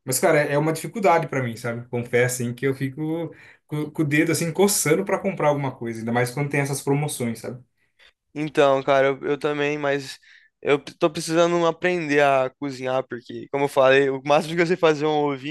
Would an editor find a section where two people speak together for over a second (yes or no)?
no